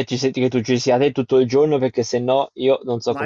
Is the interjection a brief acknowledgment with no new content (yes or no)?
no